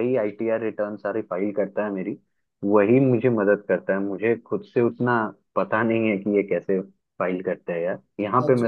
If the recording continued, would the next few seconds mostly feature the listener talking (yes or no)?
yes